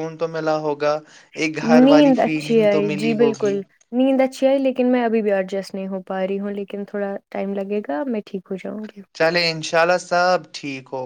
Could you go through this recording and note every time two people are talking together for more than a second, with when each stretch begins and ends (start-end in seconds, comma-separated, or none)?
1.8-3.5